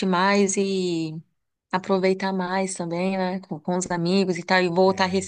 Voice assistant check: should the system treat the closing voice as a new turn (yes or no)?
no